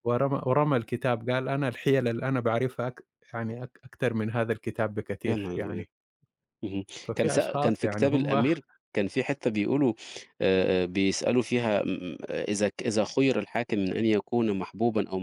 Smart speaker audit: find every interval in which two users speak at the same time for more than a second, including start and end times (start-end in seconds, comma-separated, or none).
7.0-8.4